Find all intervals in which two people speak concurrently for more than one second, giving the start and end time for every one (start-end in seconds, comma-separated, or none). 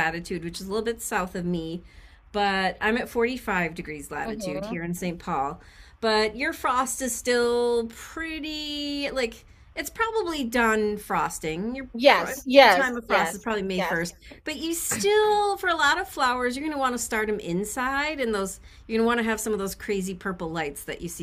11.9-14.0